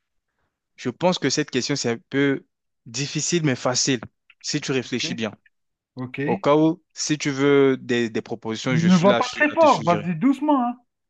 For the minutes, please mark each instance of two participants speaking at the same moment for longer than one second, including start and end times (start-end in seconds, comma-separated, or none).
8.7-10.1